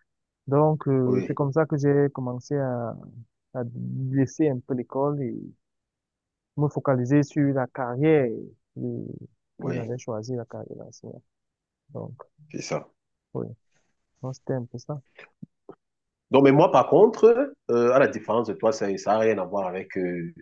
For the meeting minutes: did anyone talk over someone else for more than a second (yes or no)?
no